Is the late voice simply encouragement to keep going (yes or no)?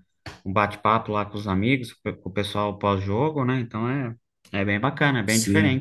no